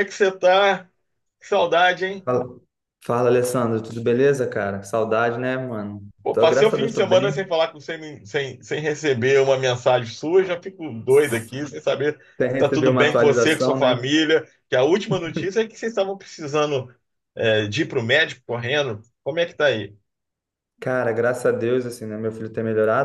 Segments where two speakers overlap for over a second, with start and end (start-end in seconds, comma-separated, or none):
6.2-7.5, 12.3-14.1